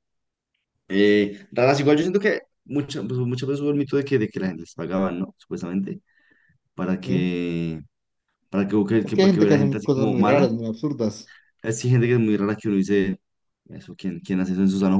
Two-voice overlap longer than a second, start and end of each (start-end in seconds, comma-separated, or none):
9.0-10.5